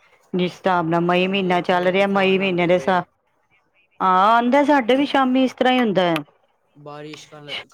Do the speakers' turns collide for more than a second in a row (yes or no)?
yes